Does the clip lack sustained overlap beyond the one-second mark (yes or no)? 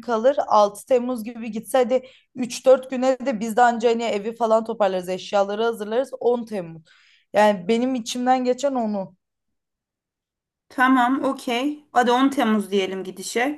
yes